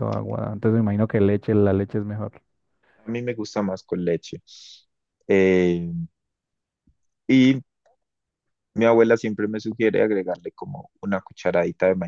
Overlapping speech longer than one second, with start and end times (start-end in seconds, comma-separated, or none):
none